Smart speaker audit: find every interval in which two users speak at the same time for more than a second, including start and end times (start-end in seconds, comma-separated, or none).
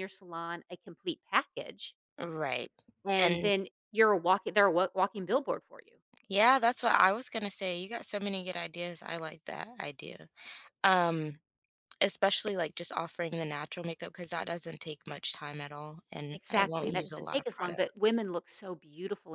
16.3-17.8